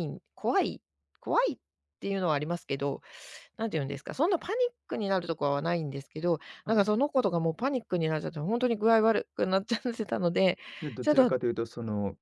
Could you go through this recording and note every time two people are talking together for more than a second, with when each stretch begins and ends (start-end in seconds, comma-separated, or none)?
none